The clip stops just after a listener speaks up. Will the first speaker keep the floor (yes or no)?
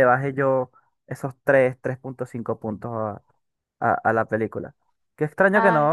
yes